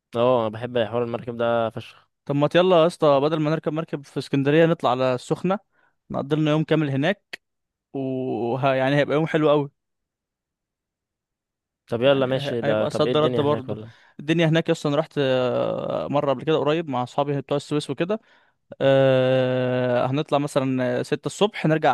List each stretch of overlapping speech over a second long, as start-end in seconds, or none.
12.0-13.8